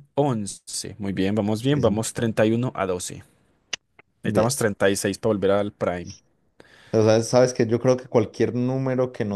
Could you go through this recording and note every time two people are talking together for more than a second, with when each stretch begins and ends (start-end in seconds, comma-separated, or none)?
none